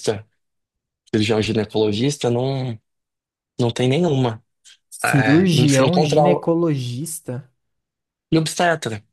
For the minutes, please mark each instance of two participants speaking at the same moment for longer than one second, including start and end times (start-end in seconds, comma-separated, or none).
5.0-6.5